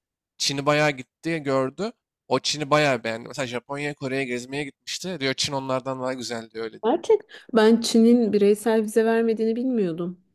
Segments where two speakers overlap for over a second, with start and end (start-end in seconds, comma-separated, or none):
none